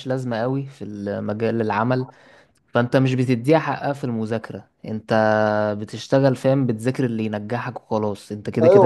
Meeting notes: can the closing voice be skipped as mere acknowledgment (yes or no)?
no